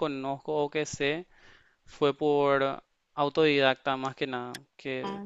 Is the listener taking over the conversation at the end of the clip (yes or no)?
no